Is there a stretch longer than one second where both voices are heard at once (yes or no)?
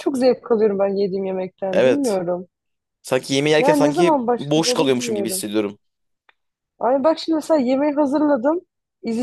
yes